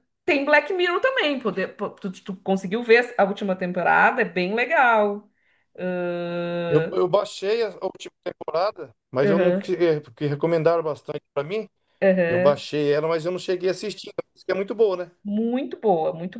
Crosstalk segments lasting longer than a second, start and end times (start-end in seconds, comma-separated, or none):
none